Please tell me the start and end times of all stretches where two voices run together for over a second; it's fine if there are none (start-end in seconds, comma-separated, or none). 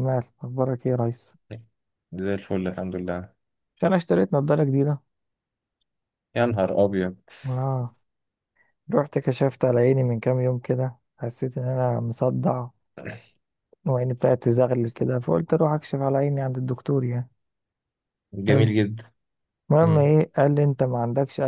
none